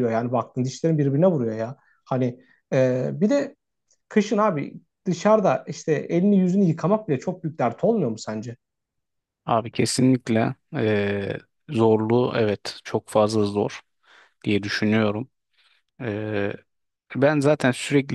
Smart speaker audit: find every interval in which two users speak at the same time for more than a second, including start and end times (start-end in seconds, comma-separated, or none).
none